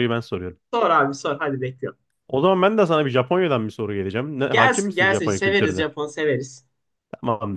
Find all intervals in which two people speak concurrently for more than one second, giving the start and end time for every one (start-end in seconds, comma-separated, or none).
4.5-5.9